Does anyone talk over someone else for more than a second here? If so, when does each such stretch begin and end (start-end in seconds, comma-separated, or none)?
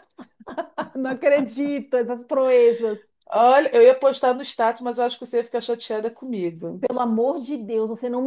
none